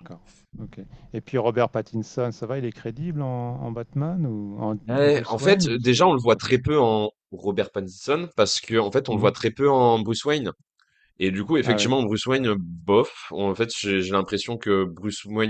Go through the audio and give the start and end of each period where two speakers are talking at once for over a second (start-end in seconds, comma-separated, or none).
4.9-6.6